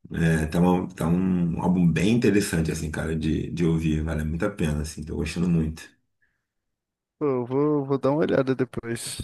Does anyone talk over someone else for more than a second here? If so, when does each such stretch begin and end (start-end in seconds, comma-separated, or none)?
none